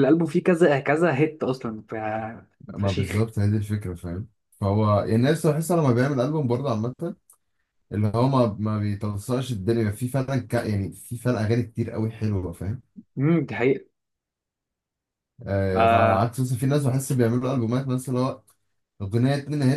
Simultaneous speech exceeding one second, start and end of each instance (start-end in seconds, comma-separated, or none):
none